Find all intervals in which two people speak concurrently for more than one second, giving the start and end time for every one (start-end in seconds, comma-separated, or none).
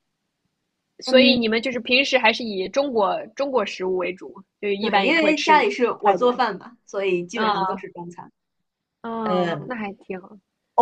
4.8-6.4